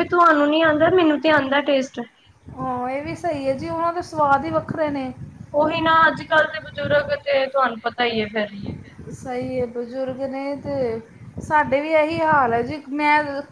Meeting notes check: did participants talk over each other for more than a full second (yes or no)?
no